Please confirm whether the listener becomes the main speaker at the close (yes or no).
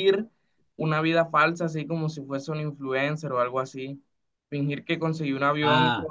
no